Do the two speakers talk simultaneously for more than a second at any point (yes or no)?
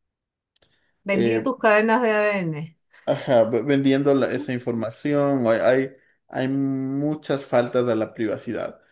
no